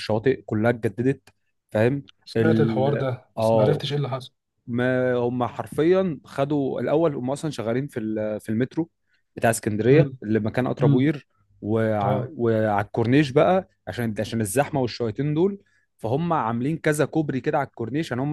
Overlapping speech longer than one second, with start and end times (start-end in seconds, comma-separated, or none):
2.2-3.9